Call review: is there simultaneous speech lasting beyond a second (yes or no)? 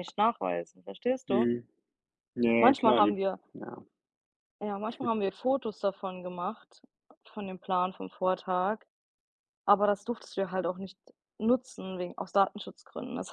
no